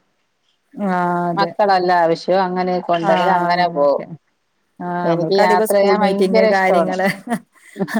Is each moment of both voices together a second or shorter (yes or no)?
no